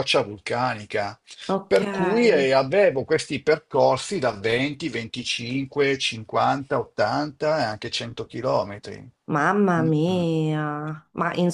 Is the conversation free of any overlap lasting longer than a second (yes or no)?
yes